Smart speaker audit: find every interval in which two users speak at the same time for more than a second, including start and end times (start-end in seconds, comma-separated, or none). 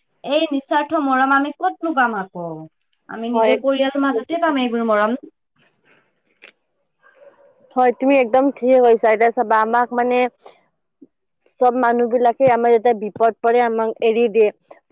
3.3-4.6